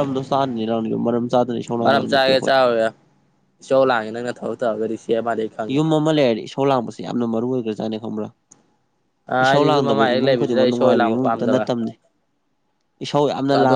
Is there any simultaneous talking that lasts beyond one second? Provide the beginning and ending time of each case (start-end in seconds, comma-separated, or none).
9.4-11.6